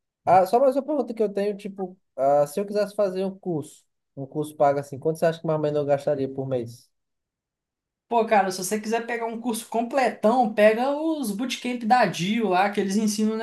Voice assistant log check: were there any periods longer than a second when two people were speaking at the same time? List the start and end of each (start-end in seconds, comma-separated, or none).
none